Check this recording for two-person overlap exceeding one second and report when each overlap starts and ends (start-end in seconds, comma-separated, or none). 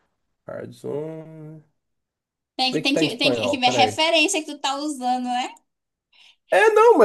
2.6-4.0